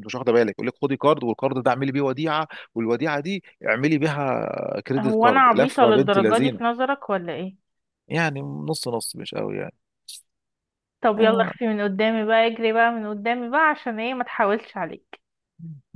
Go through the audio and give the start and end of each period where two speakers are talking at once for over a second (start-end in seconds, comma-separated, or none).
5.0-6.6